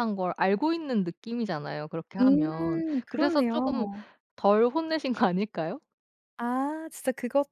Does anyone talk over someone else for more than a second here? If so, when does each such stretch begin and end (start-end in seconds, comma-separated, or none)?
2.2-3.9